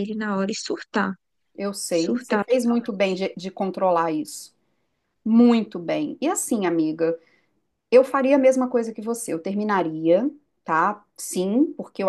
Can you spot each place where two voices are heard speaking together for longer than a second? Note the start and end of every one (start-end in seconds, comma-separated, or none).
1.9-3.2